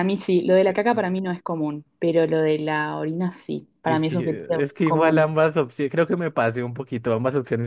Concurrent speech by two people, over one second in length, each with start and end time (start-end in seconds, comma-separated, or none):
3.8-5.3